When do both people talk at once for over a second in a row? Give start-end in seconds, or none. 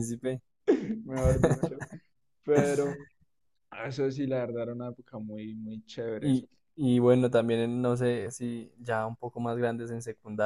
none